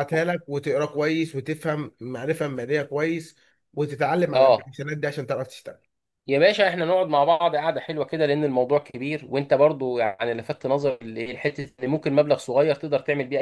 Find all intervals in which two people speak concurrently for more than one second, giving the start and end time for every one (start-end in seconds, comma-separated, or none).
none